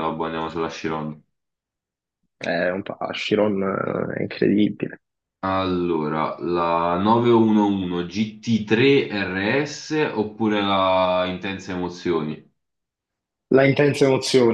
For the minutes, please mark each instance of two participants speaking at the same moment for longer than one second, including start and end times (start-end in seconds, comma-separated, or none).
none